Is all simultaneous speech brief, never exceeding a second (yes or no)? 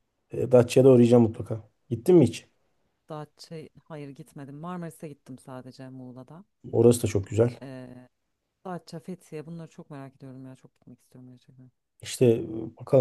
yes